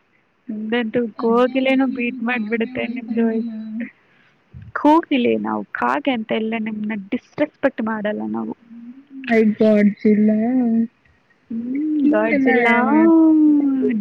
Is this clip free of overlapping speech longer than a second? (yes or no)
no